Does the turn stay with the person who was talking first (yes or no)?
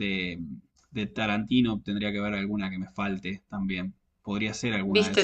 no